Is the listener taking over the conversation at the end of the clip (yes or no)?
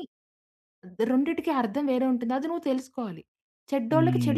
yes